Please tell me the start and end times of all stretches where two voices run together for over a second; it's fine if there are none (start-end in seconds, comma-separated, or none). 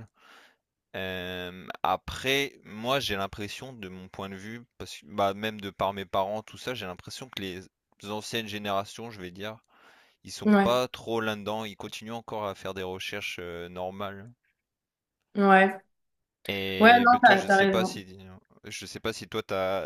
16.8-18.0